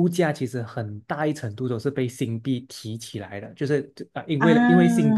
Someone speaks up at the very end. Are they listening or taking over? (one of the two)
listening